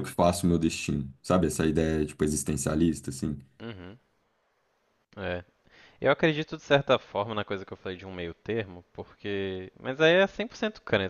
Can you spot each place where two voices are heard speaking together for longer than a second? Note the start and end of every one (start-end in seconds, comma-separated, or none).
none